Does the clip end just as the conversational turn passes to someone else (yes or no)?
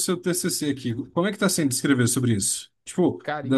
no